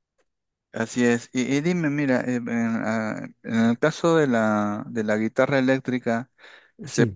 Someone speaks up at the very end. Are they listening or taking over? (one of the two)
listening